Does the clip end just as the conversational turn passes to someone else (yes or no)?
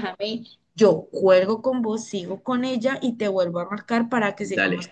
yes